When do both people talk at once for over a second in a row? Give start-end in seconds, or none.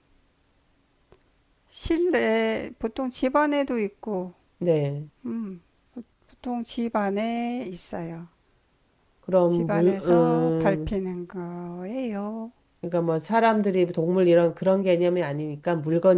9.5-11.0